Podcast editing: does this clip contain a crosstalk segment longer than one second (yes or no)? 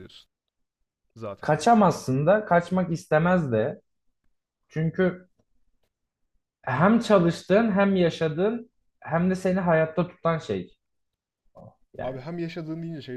no